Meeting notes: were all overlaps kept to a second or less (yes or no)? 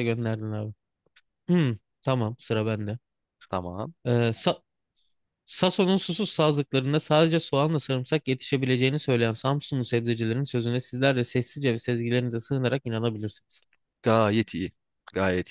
yes